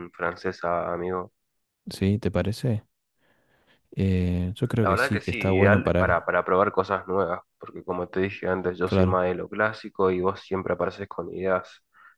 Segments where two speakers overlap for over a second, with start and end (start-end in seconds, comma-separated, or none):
4.8-6.2